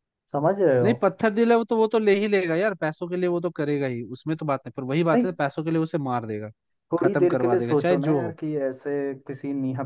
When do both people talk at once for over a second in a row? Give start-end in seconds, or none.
7.0-8.3